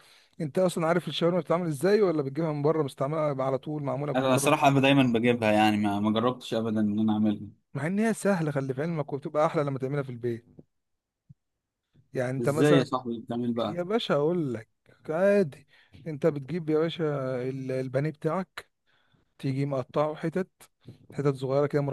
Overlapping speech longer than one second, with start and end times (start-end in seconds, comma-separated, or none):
none